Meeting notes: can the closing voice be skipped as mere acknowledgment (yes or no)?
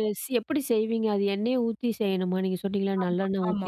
no